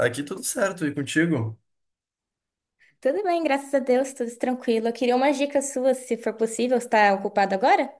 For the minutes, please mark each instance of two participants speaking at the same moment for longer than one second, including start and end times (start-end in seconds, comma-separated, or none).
none